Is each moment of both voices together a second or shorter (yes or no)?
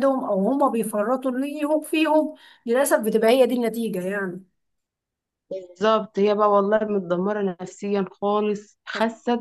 yes